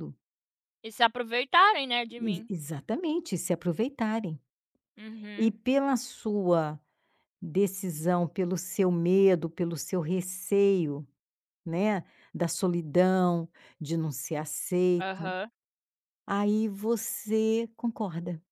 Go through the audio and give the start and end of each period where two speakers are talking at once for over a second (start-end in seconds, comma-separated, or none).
none